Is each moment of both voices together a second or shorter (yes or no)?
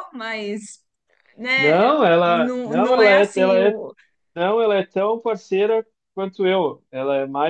no